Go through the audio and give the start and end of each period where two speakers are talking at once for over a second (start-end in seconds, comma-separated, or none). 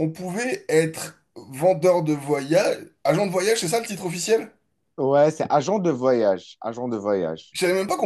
none